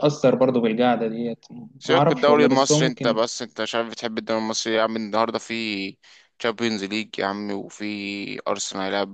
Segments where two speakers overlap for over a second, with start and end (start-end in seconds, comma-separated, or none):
1.8-3.2